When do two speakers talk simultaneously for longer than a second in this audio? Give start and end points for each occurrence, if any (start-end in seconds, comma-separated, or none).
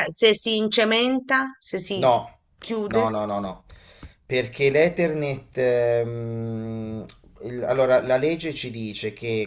none